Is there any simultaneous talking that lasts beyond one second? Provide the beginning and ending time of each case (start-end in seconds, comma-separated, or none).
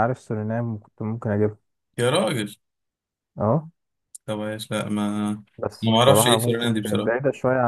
5.8-7.1